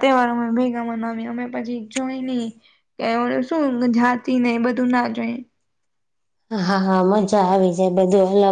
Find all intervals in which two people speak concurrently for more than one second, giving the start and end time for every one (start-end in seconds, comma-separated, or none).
none